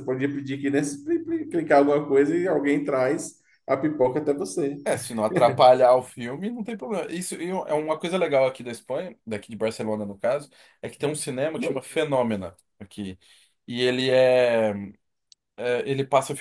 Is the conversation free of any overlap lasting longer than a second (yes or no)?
yes